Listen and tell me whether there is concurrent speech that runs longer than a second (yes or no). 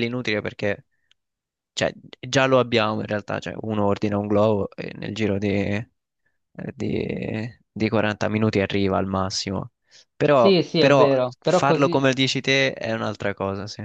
yes